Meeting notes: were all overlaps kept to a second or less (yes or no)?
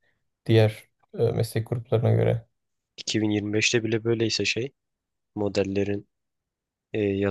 yes